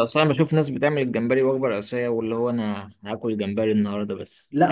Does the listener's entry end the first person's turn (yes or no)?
yes